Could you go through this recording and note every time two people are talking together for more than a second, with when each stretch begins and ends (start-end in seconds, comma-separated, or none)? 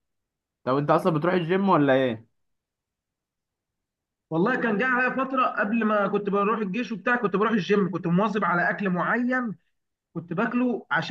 none